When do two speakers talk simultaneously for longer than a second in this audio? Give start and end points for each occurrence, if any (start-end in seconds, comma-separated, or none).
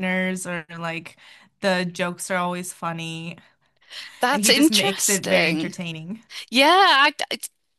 4.3-5.8